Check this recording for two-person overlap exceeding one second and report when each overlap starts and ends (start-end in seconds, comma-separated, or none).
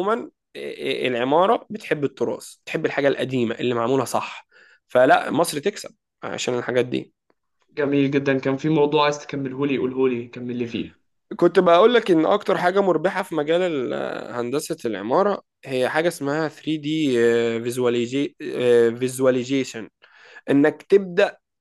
none